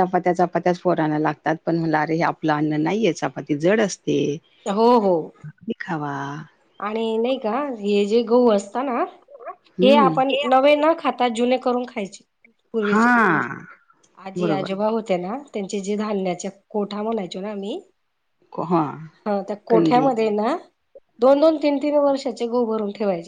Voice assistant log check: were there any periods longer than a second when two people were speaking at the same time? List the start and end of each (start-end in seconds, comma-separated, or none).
none